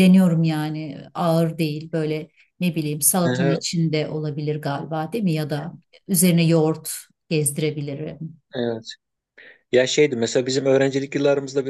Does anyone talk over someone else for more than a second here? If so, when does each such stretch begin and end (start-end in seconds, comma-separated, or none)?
none